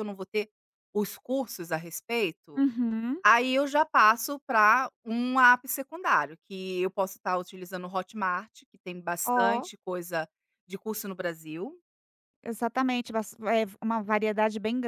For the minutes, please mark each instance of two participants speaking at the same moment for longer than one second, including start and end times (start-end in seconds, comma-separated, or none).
none